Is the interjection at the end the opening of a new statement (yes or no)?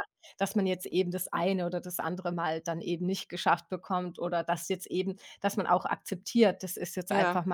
no